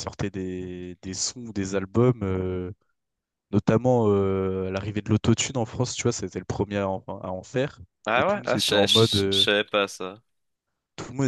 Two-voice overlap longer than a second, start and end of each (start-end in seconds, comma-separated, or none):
8.0-9.5